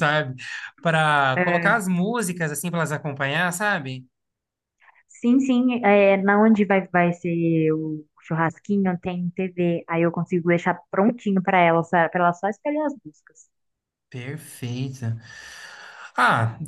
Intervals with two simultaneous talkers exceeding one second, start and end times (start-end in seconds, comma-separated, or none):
none